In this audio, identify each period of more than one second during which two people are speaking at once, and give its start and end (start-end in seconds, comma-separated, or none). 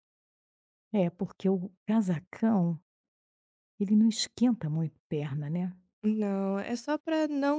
none